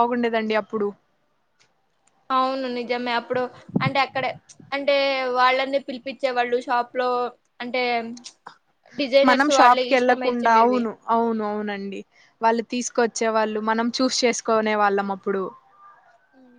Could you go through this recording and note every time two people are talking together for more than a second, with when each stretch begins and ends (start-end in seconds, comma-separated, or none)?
9.3-10.8